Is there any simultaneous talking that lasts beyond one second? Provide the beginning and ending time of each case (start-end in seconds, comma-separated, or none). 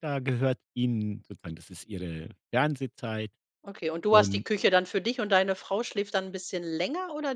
none